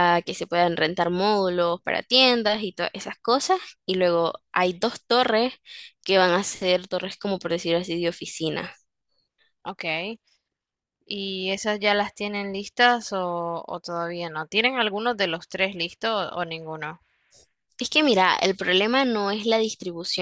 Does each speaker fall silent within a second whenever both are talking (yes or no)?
yes